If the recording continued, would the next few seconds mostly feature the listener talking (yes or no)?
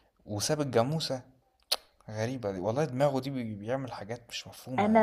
yes